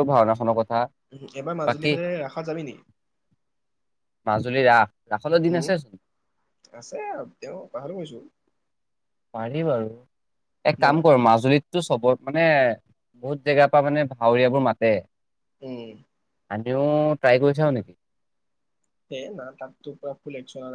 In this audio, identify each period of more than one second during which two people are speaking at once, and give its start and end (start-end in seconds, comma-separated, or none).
none